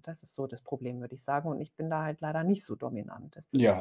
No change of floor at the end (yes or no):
no